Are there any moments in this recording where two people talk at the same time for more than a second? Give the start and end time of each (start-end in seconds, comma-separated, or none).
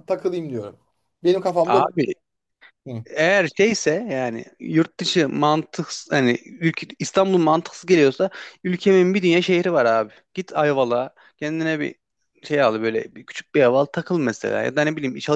none